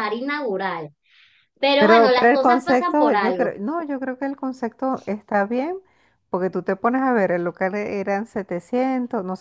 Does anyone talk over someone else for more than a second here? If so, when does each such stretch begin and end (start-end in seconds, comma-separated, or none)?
1.8-3.5